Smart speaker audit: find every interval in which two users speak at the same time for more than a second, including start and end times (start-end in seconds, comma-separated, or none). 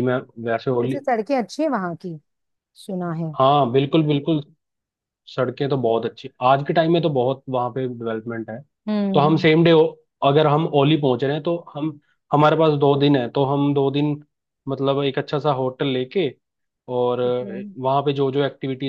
none